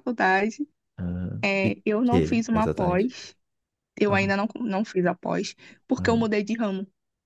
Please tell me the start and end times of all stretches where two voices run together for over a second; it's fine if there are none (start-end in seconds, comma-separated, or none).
1.4-3.1